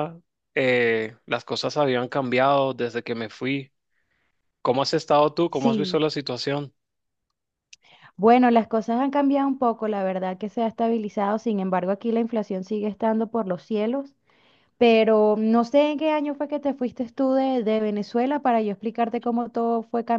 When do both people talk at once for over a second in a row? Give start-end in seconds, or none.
none